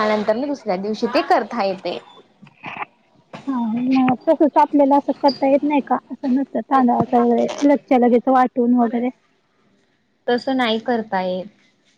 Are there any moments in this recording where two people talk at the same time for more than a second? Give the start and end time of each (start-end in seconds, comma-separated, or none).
none